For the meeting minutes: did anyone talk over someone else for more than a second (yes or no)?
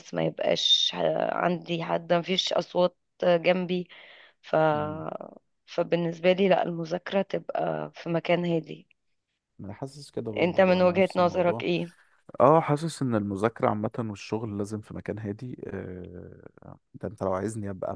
yes